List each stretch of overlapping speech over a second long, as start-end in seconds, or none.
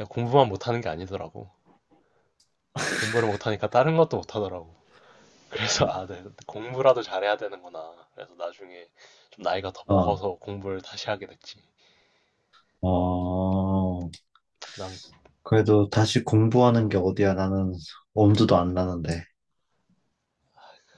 none